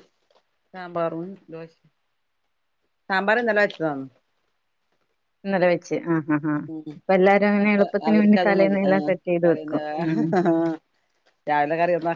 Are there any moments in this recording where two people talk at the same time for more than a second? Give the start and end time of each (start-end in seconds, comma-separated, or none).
7.7-10.2